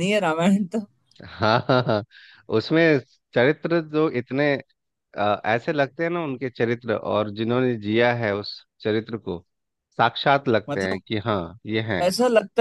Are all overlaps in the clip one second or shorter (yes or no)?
yes